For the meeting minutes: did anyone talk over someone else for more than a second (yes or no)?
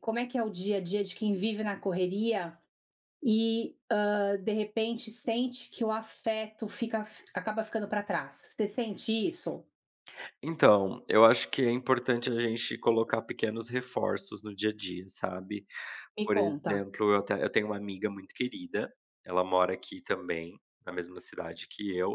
no